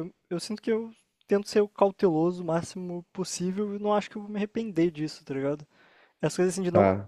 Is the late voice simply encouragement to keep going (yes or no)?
yes